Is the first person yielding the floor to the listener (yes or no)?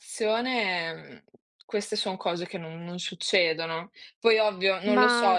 no